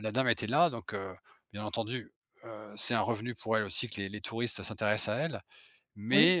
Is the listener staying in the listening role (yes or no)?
yes